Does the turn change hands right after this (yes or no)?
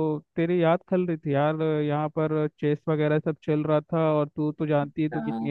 yes